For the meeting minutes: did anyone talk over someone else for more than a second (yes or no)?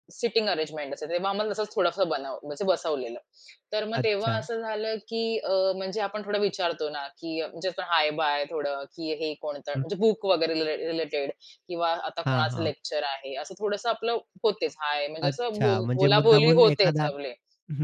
yes